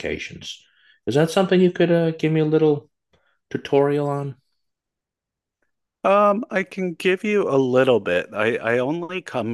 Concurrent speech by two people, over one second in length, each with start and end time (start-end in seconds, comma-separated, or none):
none